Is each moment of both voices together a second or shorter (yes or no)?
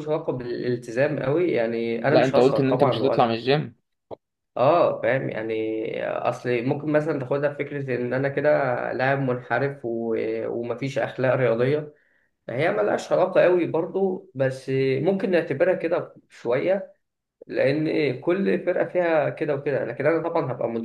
no